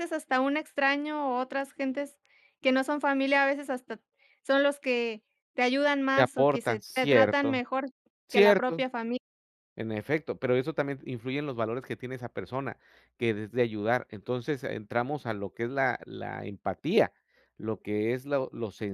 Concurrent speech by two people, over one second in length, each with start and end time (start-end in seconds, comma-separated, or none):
6.2-7.6